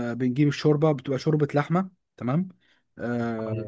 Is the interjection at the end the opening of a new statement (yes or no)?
yes